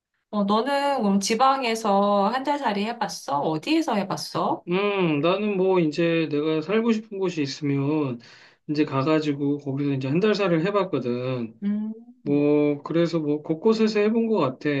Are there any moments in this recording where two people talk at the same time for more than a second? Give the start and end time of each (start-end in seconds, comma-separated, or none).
none